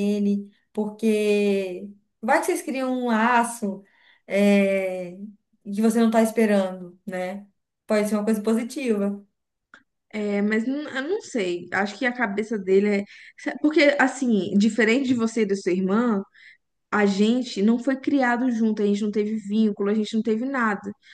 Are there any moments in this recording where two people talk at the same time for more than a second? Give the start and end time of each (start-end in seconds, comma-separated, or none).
none